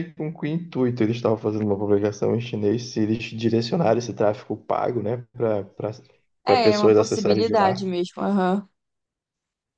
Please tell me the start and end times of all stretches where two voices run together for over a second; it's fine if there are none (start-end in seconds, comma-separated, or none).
6.5-7.9